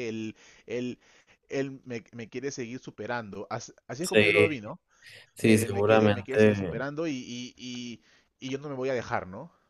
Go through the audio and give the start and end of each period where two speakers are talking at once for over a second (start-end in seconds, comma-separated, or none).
5.4-6.8